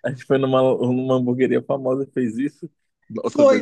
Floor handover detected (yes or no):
yes